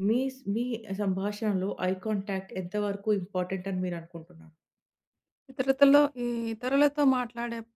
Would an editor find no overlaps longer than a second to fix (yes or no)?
yes